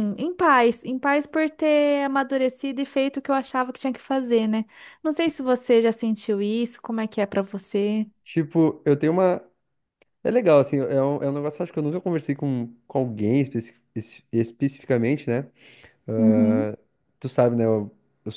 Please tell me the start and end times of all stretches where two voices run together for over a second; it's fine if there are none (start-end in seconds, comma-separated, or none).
none